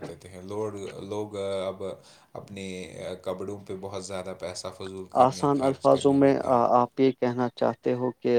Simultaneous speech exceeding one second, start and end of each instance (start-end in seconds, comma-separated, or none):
5.2-6.7